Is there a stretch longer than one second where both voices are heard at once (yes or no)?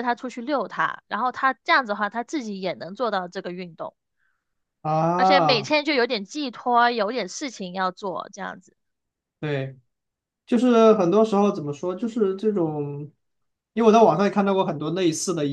no